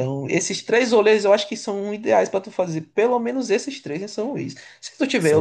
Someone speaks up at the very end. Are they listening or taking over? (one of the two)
listening